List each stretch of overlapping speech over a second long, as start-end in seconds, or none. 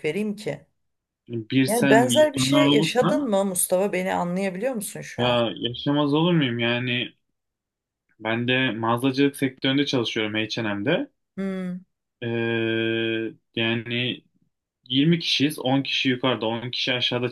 1.7-3.3